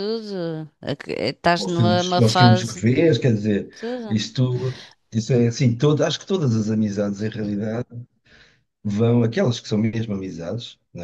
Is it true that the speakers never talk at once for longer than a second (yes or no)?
no